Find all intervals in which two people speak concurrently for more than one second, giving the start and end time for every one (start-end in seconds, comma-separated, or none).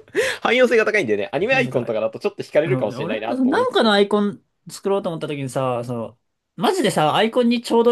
2.6-4.0